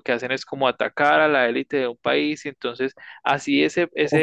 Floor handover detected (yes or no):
yes